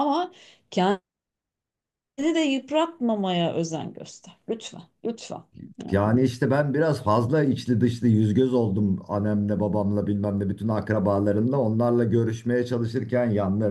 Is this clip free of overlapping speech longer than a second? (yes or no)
yes